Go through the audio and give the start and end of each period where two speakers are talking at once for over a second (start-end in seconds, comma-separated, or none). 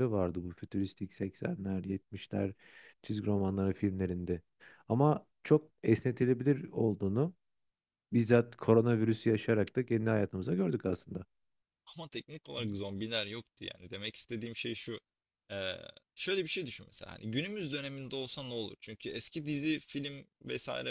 none